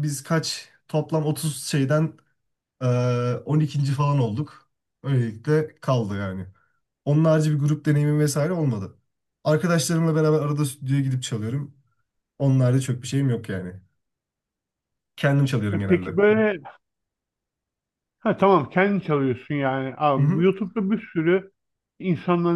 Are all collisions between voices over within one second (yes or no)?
yes